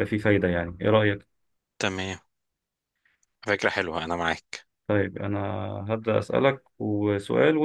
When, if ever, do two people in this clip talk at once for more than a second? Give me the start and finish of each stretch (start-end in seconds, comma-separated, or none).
none